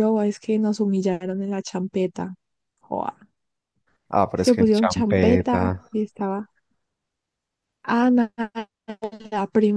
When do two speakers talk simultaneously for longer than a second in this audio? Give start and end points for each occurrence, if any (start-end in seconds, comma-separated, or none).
4.3-5.8